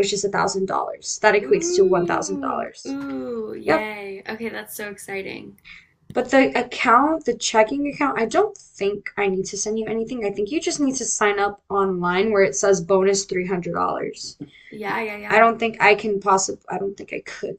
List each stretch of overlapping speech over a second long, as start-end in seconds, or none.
1.4-3.0